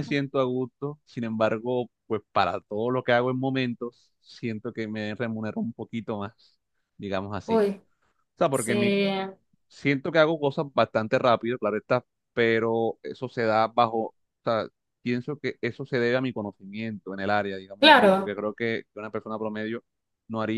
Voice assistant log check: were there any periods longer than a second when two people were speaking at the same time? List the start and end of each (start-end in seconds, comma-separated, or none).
none